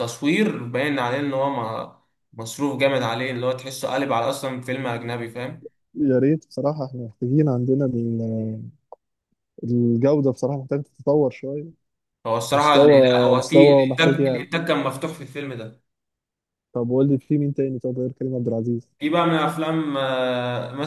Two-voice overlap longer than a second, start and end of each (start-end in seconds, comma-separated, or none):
12.5-14.5